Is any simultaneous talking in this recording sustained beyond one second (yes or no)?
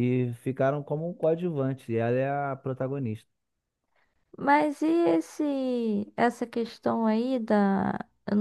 no